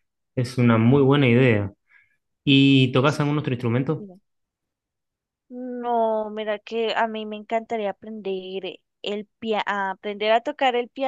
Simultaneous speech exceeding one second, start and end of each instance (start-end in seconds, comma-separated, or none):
none